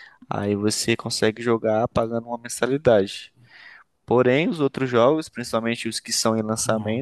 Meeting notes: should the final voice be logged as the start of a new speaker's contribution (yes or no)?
no